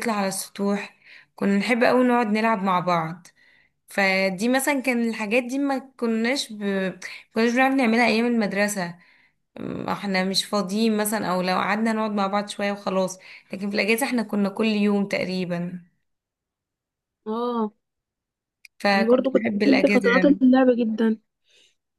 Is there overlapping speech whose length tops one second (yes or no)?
yes